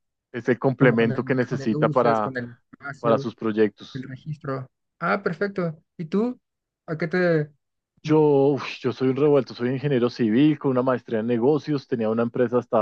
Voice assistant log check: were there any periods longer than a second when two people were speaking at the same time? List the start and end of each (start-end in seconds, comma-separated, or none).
0.8-2.4